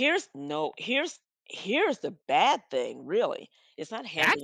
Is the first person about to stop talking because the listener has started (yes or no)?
yes